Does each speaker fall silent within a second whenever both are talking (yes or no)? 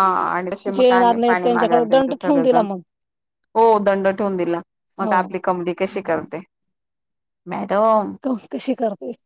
no